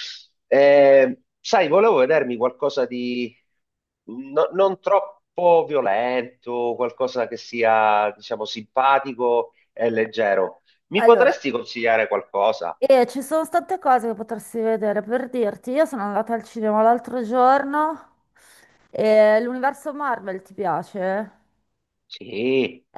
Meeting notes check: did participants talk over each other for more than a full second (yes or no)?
no